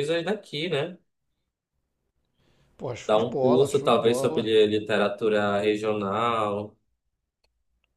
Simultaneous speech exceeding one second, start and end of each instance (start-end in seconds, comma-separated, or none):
3.1-4.5